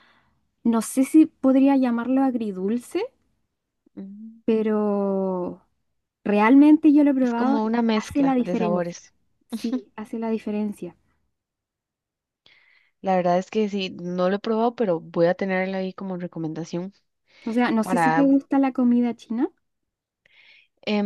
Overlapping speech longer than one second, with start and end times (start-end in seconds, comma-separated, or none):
7.2-9.0